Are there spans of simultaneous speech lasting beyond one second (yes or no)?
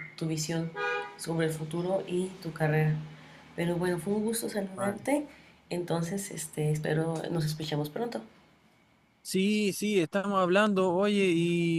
no